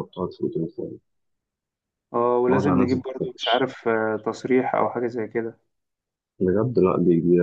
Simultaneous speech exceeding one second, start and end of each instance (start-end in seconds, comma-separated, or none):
2.5-3.7